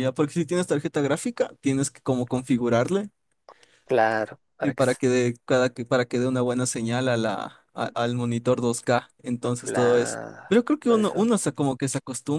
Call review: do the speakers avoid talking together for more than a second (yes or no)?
no